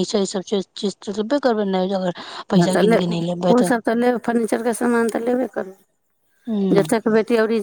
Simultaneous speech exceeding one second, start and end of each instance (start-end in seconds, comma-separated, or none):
none